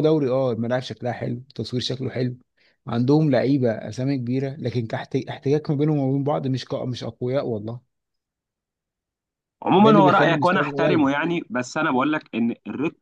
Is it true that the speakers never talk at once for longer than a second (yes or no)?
no